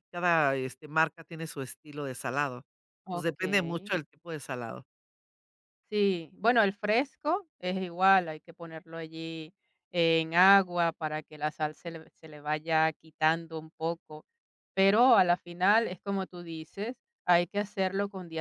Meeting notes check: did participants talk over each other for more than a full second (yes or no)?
no